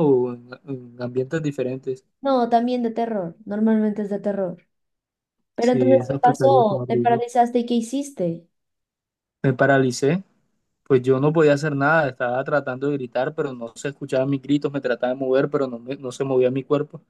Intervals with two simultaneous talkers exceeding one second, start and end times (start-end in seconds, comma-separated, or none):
5.6-7.2